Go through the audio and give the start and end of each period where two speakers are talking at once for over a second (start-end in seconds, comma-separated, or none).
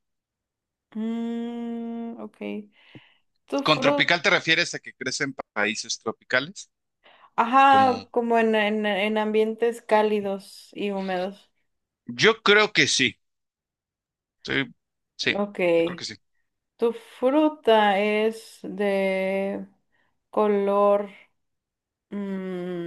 none